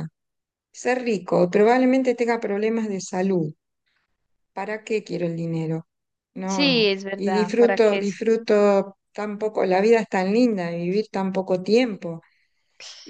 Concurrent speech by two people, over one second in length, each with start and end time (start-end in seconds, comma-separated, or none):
6.4-8.2